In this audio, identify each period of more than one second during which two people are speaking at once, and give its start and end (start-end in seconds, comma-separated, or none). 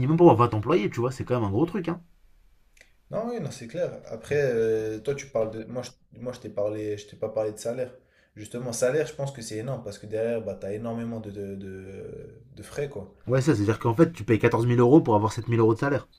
none